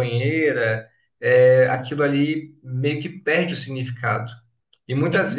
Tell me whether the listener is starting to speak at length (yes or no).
no